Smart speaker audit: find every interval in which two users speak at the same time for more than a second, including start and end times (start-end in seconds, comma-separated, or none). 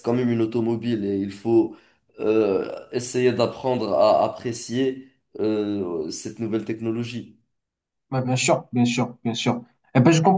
none